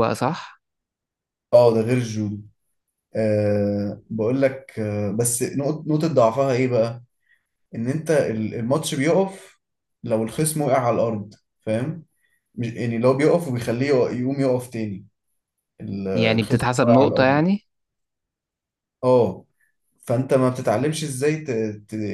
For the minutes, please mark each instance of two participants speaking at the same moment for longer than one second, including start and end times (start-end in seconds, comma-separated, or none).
16.1-17.4